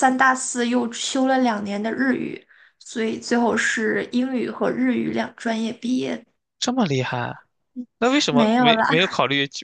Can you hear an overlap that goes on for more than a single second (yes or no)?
no